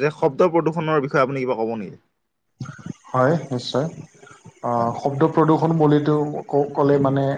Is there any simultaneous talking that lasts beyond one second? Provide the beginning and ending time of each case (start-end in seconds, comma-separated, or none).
none